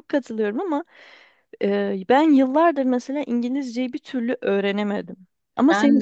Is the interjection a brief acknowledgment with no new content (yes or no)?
yes